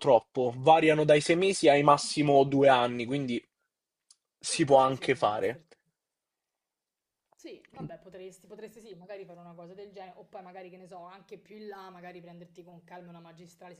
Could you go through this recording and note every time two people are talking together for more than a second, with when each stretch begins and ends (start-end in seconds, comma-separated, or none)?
4.4-5.6